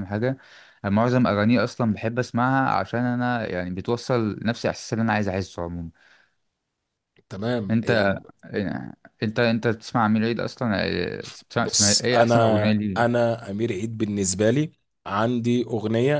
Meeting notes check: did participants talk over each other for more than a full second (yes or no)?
yes